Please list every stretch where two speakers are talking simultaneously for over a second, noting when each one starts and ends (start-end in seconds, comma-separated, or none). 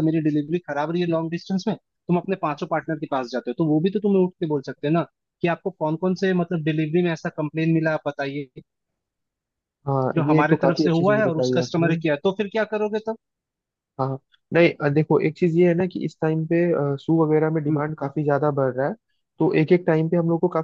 10.1-11.9